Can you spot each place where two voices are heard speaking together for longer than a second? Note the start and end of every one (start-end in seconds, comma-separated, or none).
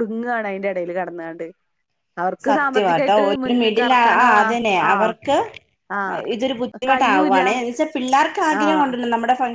2.5-5.1